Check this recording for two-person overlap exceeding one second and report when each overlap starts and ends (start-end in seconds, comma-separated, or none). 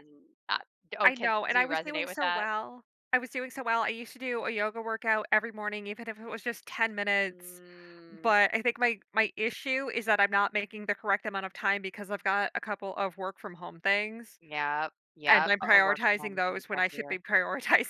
1.0-2.5, 15.3-17.2